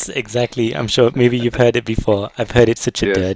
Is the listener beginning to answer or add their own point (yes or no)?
no